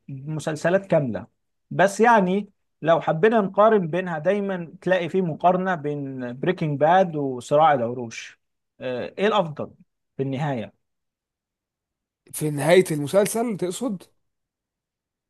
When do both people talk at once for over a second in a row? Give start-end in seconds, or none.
none